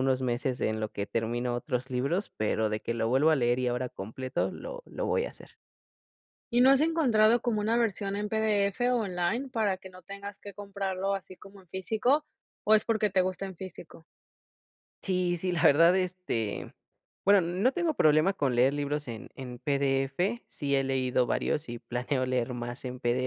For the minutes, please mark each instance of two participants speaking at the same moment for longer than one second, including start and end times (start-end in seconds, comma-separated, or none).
none